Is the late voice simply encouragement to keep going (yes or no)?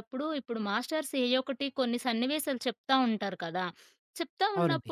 yes